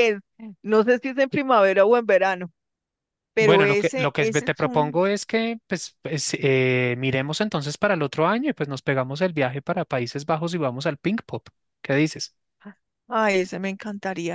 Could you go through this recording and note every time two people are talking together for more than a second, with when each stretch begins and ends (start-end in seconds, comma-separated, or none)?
3.4-5.0